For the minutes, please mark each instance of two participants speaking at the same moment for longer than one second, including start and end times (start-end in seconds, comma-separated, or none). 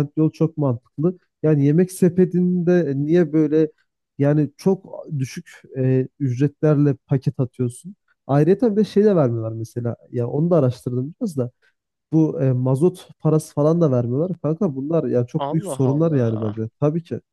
15.4-16.6